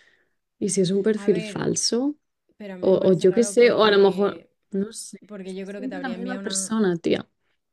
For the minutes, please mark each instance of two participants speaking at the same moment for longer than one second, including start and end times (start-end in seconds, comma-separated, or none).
2.8-4.5, 5.3-6.7